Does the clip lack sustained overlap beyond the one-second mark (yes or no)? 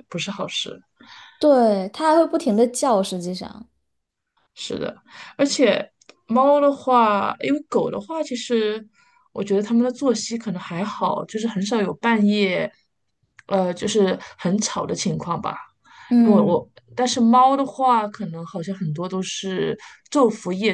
yes